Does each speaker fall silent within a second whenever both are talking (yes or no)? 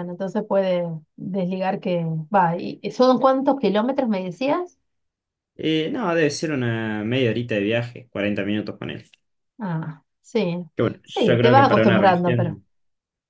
no